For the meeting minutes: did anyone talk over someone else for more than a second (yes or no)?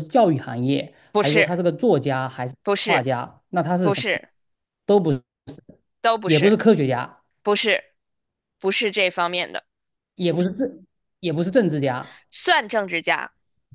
no